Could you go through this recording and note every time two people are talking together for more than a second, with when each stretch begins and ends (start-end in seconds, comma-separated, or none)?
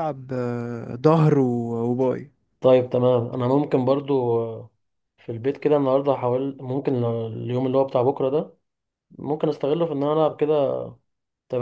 none